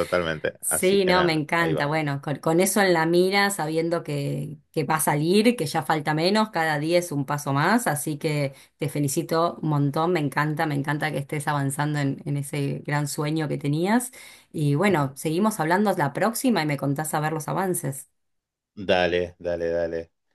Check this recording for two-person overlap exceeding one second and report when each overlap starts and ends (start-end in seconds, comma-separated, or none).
0.6-2.0